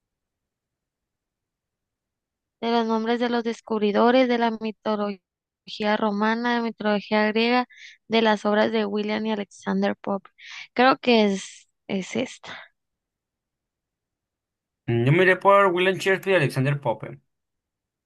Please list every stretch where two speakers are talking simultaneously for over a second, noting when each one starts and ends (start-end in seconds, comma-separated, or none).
none